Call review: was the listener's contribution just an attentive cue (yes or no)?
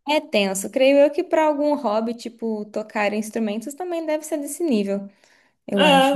no